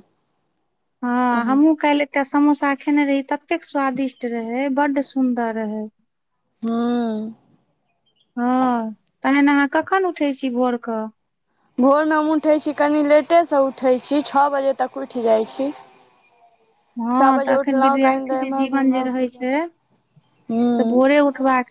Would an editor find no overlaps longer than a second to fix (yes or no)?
no